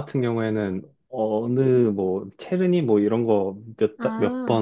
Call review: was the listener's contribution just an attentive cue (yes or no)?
yes